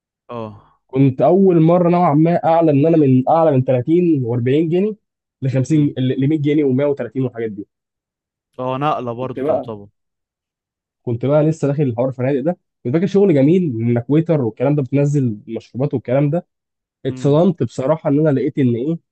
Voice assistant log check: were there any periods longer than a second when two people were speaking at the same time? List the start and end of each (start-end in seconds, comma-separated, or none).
none